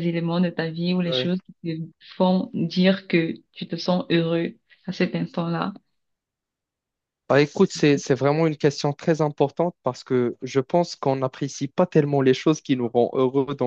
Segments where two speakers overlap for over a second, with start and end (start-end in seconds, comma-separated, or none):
none